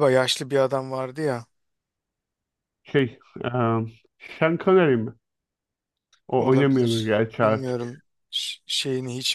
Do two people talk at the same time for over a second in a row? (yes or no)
yes